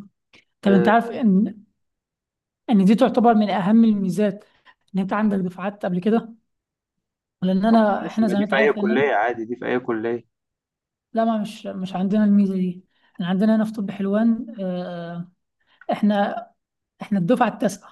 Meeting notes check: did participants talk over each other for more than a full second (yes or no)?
yes